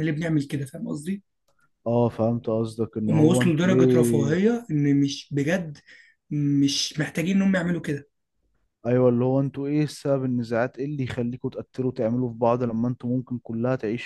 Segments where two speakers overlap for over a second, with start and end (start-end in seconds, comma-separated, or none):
3.1-4.4